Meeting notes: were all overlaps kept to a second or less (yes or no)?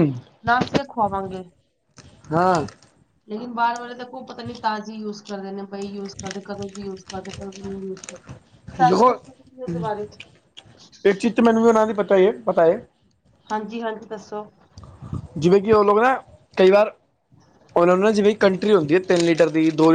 yes